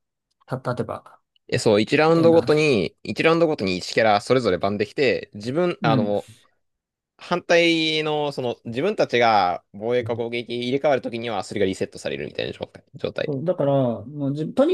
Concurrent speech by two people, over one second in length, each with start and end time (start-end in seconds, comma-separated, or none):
none